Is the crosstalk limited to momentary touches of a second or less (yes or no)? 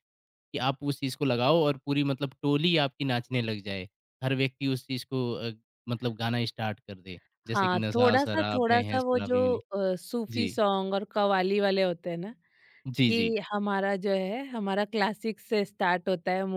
no